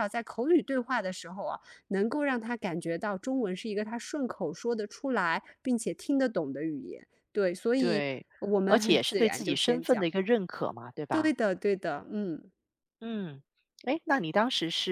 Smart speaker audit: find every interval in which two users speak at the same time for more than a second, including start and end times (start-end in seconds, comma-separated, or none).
8.7-10.1